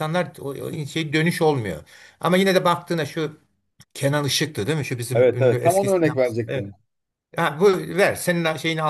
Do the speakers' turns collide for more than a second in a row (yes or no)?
yes